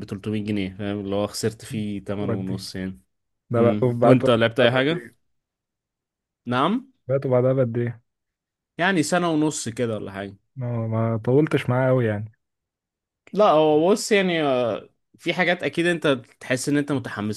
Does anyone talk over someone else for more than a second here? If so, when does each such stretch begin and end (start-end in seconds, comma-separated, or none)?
3.6-5.0